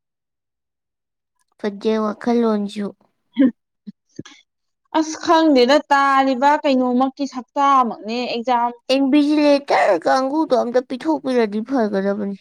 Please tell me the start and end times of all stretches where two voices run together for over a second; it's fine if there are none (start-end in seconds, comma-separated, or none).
none